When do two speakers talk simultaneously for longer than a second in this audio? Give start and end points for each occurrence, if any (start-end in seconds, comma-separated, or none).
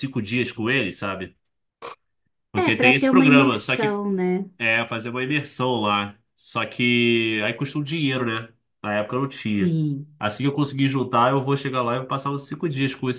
2.5-4.0